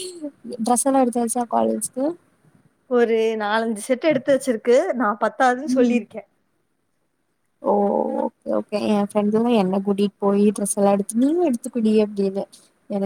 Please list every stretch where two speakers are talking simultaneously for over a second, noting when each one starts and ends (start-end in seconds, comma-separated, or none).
none